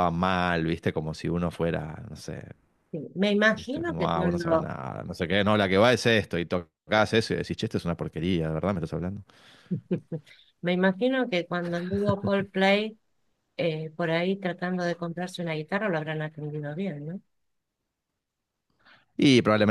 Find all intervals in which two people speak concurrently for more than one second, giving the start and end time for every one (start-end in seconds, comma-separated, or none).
3.5-4.7